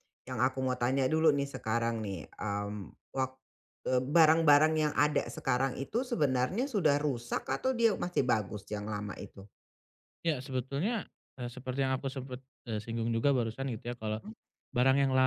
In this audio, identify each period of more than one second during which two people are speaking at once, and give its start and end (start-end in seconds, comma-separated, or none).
none